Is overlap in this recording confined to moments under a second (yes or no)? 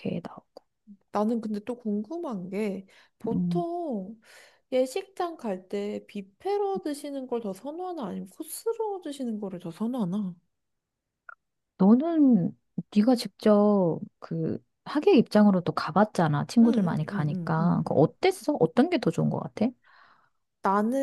no